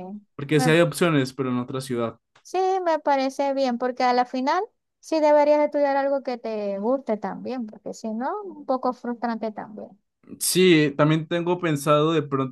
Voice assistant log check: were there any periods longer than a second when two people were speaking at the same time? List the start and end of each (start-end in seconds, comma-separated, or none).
none